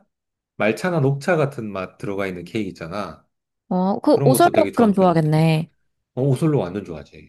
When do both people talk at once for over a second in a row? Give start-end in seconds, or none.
4.1-5.4